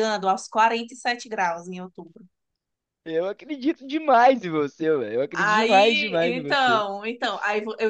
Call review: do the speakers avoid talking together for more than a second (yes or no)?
no